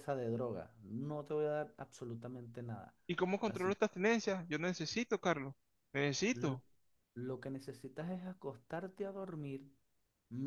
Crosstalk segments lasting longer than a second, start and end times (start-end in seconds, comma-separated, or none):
none